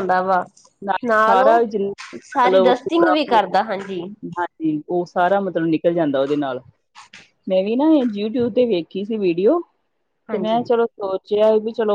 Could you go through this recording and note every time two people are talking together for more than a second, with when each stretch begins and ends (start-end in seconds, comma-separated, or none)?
2.2-4.0